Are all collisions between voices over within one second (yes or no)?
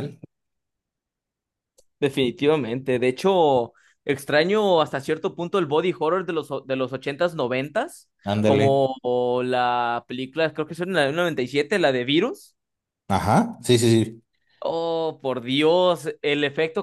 yes